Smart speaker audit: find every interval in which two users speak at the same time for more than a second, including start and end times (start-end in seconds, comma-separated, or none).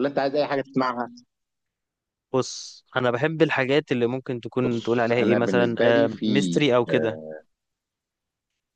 4.7-6.2